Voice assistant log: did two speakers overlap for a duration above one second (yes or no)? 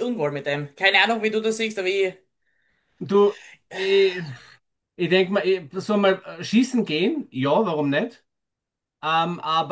no